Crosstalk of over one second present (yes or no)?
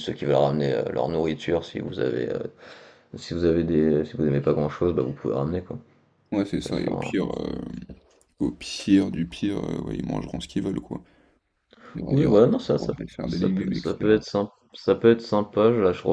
yes